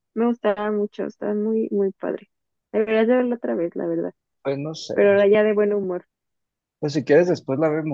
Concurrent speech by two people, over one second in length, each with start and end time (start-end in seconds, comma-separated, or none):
none